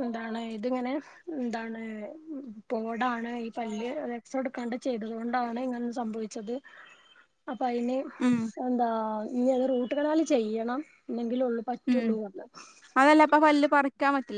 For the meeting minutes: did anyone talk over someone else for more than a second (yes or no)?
no